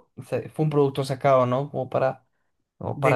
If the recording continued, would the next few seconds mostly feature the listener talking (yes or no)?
yes